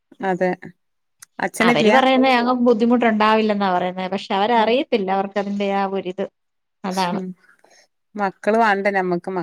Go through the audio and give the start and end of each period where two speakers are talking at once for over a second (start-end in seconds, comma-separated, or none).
none